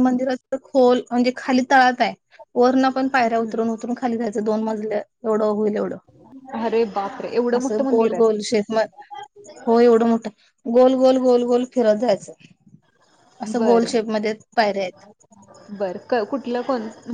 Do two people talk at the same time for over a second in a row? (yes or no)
no